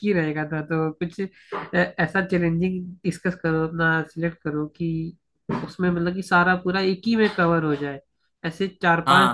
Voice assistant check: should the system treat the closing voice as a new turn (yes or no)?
no